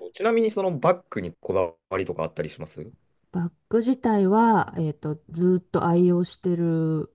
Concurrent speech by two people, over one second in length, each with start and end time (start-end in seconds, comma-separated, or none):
none